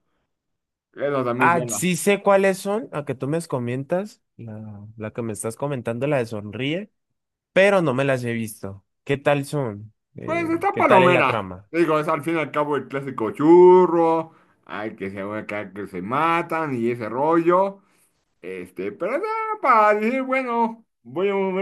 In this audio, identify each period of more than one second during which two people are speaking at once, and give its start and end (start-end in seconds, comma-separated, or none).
10.2-11.7